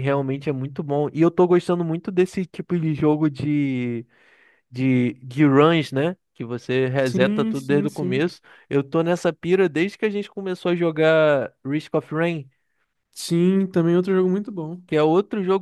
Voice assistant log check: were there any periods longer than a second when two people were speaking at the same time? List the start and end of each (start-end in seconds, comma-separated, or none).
7.0-8.3